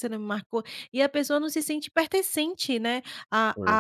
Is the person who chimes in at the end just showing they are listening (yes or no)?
yes